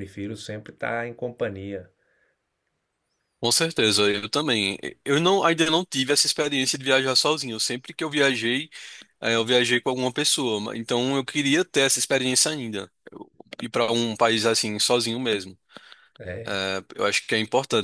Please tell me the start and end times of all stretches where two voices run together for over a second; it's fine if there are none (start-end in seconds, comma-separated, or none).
none